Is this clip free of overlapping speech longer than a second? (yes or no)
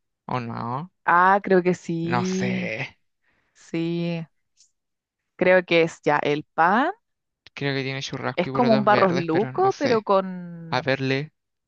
no